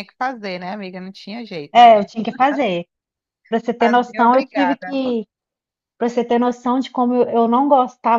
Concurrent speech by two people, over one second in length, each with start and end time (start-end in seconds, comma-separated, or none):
3.8-5.0